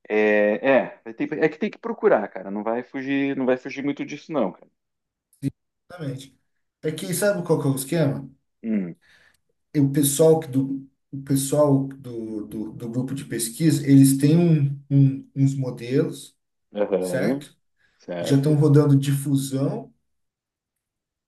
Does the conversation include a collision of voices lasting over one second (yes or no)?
no